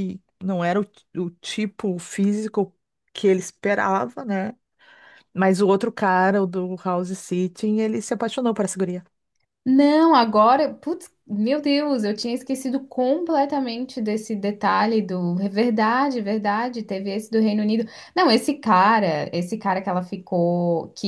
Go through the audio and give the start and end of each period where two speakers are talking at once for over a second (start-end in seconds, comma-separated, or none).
none